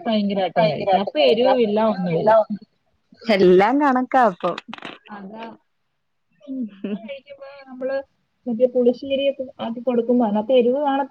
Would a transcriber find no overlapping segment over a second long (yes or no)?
no